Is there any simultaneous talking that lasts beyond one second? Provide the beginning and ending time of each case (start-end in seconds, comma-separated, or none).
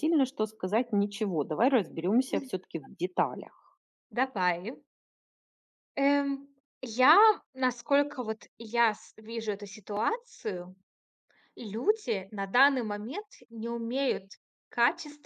none